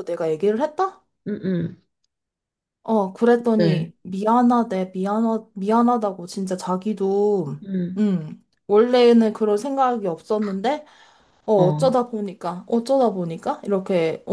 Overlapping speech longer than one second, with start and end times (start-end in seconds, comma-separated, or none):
none